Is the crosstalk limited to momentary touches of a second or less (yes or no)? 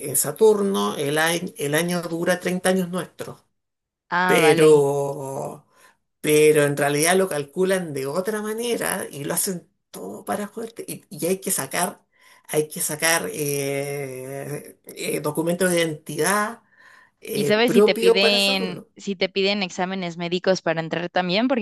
no